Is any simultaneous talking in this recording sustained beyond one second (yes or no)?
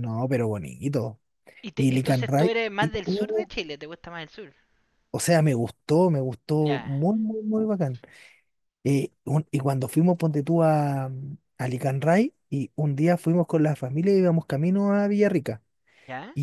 yes